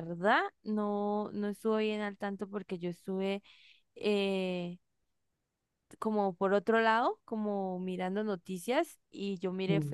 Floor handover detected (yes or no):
no